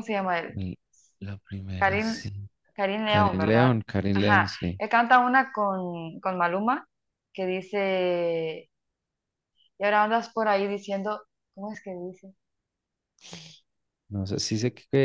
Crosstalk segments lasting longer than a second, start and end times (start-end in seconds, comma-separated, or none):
3.0-4.8